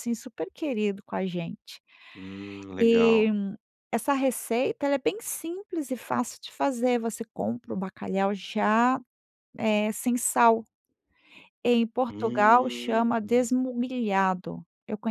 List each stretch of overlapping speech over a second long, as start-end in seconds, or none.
12.1-13.5